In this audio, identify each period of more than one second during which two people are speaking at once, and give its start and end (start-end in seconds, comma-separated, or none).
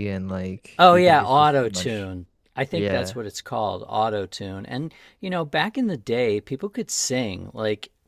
0.8-2.1